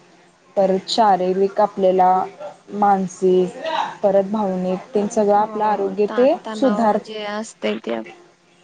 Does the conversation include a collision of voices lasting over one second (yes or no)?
yes